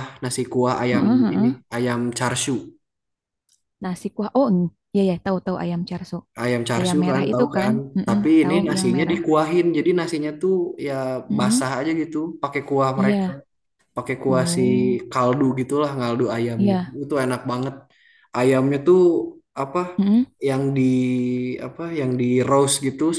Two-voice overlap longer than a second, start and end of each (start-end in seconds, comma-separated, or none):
6.8-9.2